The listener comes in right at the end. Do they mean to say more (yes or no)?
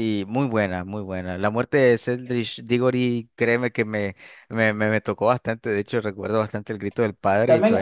yes